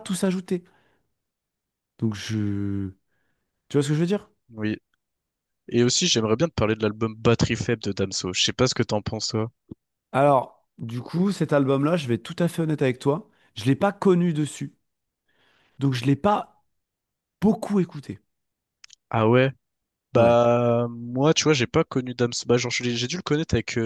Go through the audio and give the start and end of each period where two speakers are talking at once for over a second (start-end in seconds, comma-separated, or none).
none